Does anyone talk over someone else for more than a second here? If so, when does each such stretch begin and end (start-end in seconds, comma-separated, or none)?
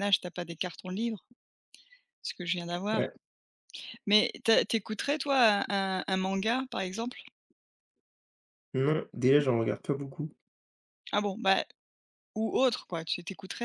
none